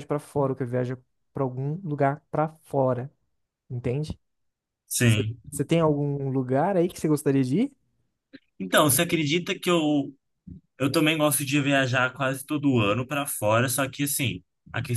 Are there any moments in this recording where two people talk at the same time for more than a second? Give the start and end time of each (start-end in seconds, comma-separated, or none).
none